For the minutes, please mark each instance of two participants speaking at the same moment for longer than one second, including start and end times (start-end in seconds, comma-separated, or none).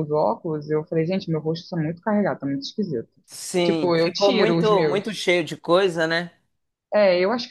3.6-5.2